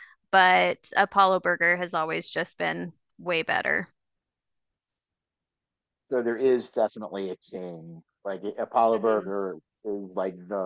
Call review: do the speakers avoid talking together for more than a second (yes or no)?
yes